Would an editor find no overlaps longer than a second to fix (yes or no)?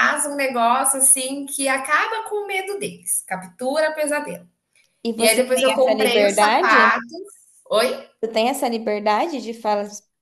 no